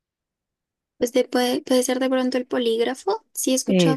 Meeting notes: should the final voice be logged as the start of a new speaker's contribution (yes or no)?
no